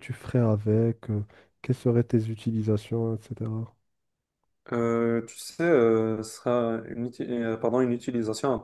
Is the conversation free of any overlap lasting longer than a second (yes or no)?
yes